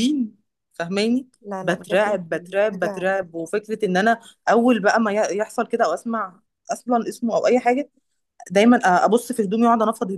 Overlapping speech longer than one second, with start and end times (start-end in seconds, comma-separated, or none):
1.4-3.1